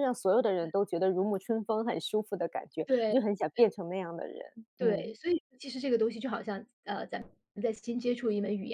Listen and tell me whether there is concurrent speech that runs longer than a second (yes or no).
no